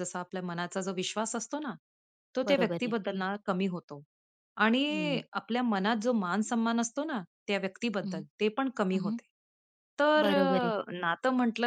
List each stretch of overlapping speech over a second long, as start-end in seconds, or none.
none